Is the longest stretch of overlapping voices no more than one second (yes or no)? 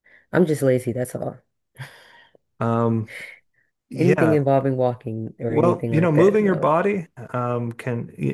no